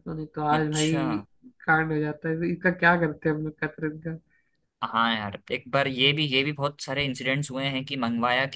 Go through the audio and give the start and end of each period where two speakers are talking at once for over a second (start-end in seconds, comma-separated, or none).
none